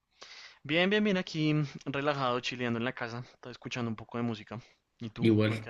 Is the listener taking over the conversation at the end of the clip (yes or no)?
yes